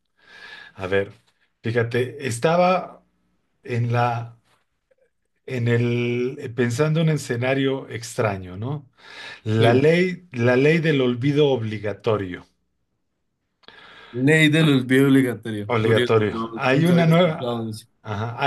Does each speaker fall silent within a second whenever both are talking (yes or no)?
no